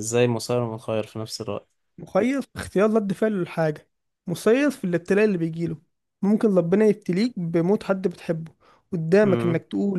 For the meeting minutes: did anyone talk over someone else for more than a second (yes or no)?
no